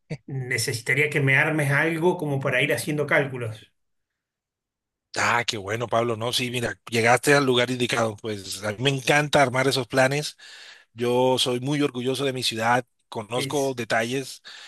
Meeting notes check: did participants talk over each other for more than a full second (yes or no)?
no